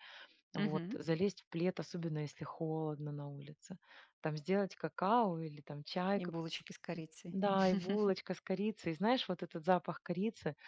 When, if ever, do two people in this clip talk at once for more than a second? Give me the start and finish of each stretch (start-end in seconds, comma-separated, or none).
none